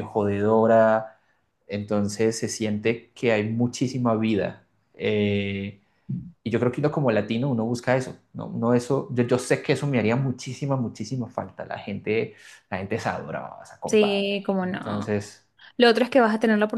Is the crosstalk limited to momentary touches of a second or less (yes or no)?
no